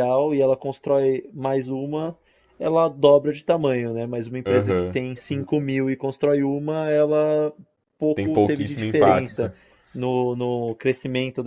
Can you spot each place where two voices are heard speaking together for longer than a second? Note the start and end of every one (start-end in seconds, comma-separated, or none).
8.2-9.5